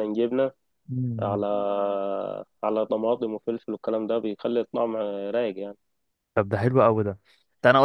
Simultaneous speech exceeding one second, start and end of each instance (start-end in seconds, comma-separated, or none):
none